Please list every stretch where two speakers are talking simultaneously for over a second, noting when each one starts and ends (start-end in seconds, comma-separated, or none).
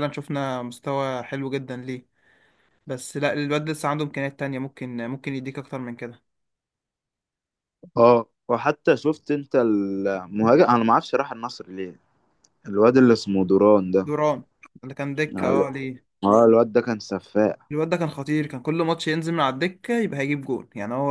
none